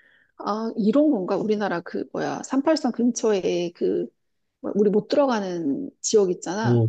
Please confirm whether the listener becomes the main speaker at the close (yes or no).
yes